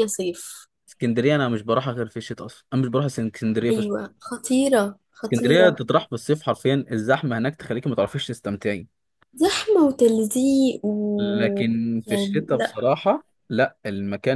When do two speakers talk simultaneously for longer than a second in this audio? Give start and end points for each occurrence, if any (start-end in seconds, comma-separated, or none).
11.2-12.8